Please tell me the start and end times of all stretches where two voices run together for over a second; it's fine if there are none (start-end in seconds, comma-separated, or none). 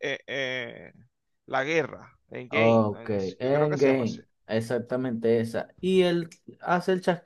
2.5-4.2